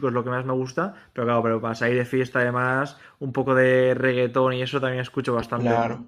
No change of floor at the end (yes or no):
no